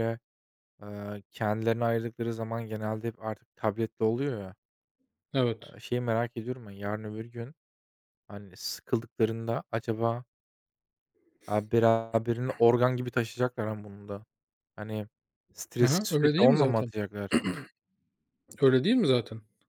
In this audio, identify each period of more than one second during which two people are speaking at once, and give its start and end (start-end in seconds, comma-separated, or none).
15.7-16.9